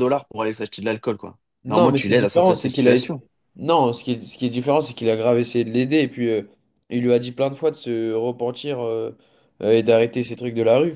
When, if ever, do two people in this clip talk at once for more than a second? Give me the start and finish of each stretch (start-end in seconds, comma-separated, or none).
1.6-3.1